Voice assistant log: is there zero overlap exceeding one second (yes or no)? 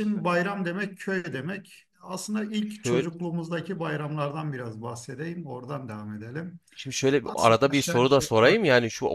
no